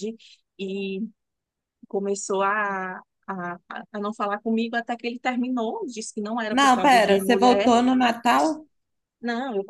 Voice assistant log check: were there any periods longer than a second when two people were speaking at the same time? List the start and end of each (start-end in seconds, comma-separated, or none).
6.5-7.7